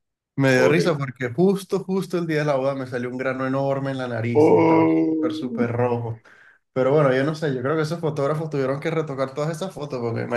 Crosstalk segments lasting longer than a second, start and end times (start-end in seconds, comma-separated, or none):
4.4-5.7